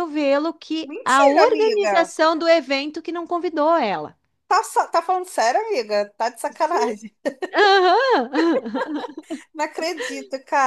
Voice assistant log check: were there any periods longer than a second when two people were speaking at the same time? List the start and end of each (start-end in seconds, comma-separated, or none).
0.8-2.1